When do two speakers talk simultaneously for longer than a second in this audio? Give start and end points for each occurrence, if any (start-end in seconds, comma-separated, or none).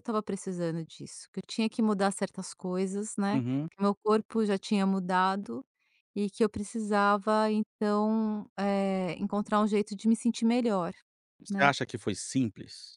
none